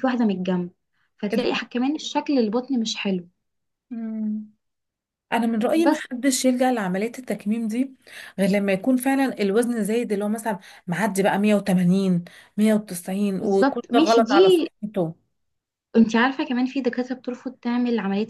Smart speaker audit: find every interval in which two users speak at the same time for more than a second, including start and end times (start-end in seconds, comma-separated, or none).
13.4-14.7